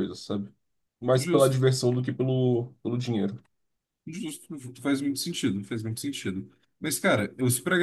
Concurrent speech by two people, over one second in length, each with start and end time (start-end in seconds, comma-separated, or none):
none